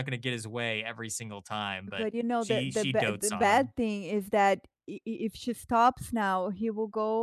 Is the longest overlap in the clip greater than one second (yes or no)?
yes